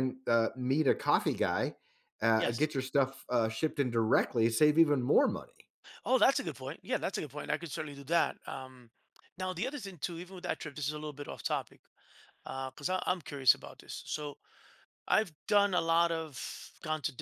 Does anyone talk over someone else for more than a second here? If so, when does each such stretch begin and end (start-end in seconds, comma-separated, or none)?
none